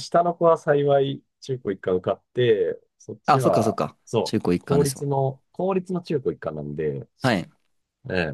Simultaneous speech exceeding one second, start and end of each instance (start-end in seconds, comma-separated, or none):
3.3-5.1